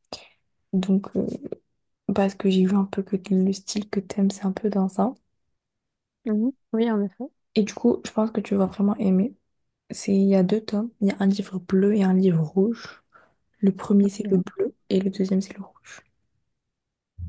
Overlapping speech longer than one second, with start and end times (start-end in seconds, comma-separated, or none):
none